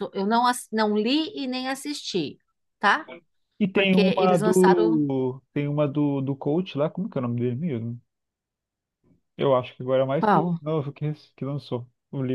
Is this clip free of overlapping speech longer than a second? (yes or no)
no